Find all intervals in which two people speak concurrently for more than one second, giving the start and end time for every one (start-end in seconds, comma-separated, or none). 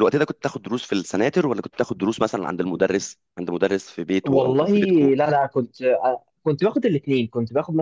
none